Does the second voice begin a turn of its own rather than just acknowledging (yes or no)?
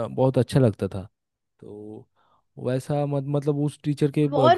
yes